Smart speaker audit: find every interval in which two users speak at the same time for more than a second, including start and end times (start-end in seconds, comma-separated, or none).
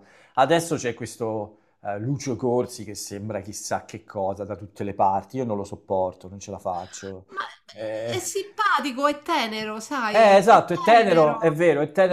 10.1-11.6